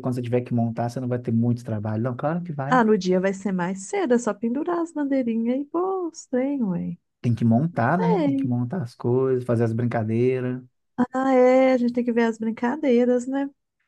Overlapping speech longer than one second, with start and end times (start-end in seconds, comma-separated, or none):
none